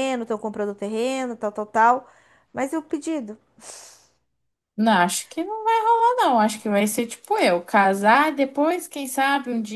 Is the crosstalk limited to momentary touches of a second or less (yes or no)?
yes